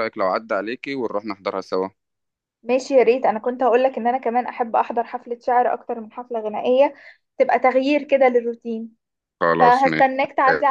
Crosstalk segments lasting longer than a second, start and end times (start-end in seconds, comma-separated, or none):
none